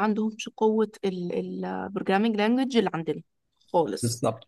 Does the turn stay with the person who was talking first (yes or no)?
yes